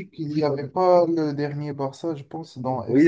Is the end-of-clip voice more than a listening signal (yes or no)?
yes